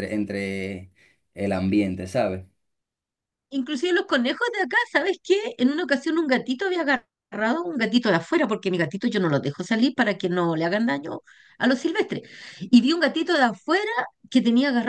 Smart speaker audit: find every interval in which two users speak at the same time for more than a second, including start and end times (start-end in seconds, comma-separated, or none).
none